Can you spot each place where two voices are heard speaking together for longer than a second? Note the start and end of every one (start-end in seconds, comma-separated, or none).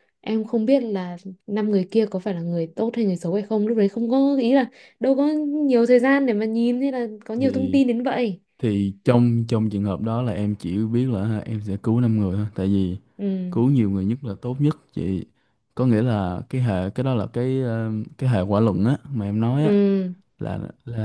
none